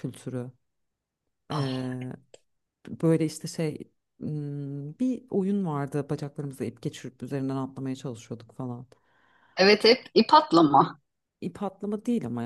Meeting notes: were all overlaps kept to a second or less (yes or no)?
yes